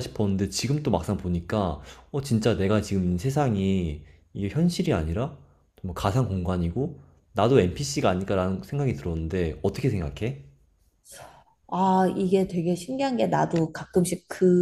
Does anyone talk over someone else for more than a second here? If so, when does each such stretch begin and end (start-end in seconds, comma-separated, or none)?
none